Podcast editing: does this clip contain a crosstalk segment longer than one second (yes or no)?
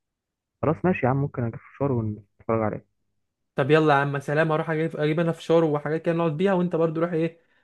no